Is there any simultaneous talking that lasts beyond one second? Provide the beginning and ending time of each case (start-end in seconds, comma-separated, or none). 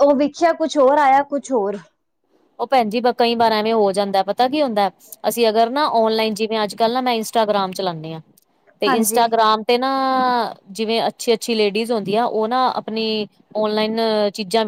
none